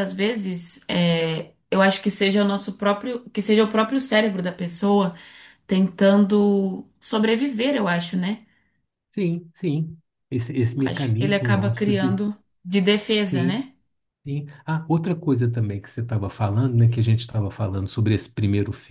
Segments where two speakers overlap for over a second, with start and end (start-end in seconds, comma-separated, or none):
10.8-12.2